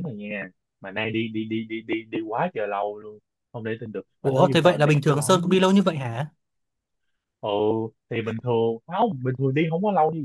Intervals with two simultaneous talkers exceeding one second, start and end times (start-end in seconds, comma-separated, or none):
4.2-5.5